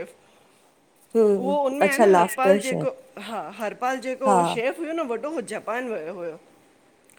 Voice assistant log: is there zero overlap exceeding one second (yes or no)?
no